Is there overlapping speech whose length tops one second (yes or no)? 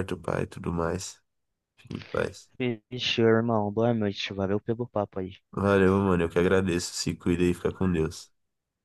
no